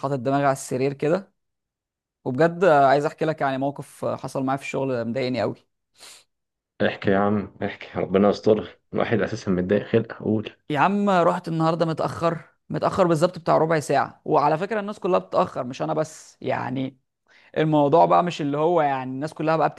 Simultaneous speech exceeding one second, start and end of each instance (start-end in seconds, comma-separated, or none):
none